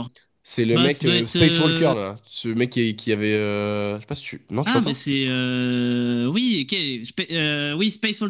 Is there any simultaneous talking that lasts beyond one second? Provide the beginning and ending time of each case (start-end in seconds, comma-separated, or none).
0.7-1.9